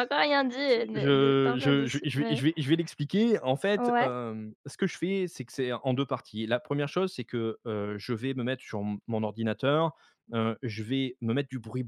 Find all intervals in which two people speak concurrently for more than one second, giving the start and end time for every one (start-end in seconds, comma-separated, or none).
0.9-2.4